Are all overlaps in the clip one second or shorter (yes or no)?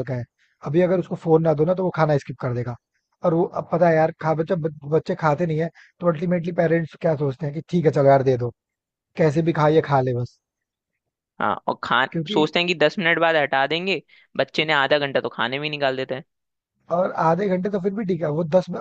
yes